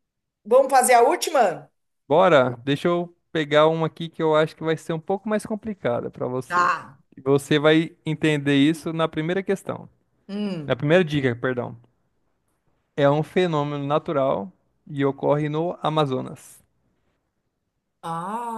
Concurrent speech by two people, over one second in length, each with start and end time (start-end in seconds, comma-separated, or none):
none